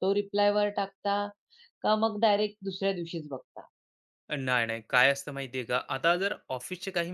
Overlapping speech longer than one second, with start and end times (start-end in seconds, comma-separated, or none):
none